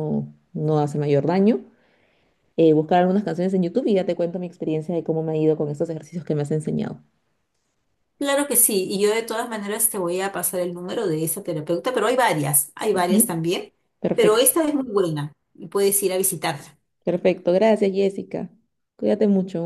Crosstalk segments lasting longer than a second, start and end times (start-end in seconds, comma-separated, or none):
none